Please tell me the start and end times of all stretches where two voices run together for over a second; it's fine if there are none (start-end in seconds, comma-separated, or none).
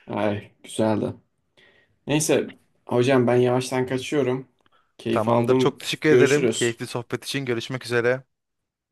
5.1-6.8